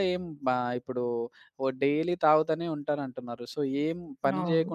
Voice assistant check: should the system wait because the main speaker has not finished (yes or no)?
yes